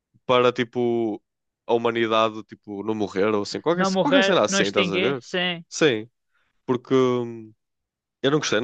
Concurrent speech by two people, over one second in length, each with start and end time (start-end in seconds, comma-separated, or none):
3.7-5.2